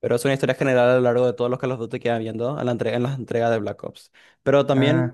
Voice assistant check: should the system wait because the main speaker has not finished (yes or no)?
yes